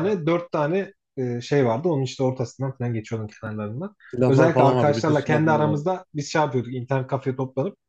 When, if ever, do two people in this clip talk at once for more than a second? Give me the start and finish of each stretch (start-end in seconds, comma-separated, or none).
4.1-5.9